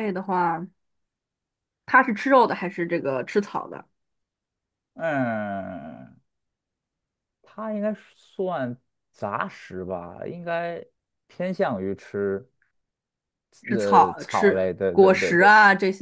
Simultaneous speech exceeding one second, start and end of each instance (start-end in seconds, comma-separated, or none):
13.7-15.5